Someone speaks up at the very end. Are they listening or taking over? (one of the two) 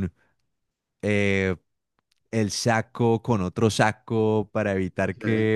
listening